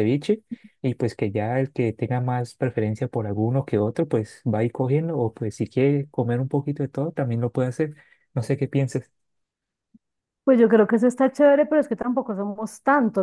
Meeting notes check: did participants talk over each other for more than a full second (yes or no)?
no